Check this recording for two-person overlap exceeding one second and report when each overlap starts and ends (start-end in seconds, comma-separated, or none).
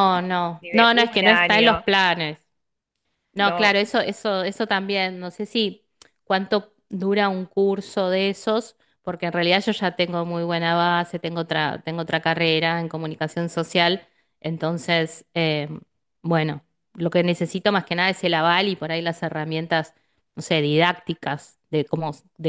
0.6-1.8